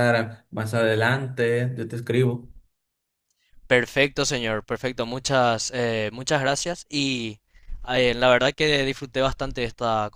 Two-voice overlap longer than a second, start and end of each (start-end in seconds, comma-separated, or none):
none